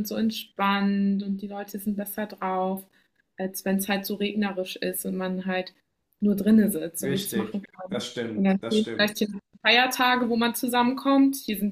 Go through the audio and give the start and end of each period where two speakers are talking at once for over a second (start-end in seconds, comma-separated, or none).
7.0-9.1